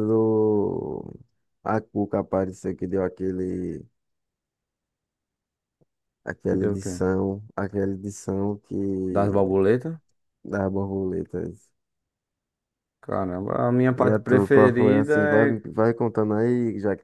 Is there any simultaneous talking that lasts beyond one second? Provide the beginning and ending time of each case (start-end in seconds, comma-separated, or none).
14.0-15.6